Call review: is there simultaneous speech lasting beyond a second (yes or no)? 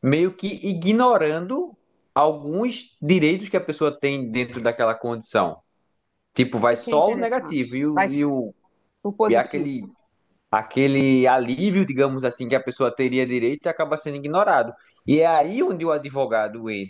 yes